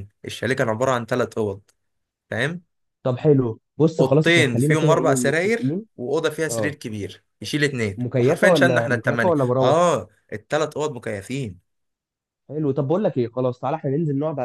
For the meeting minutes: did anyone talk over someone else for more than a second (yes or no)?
yes